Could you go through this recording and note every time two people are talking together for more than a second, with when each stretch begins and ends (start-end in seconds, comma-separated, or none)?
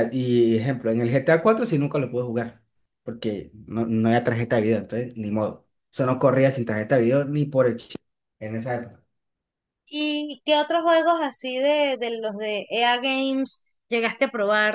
none